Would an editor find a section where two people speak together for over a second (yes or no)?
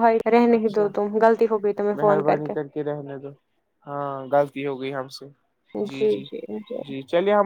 no